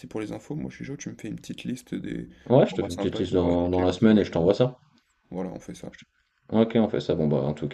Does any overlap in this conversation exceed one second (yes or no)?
yes